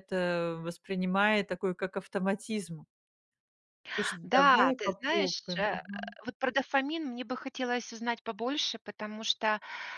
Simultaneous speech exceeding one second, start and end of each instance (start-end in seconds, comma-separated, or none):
4.2-5.8